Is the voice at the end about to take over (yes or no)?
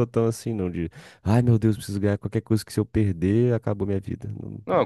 yes